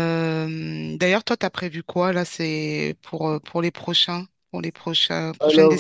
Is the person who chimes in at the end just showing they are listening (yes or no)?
no